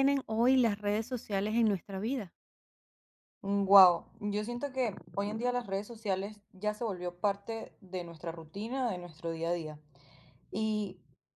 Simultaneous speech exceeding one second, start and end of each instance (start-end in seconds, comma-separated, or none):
none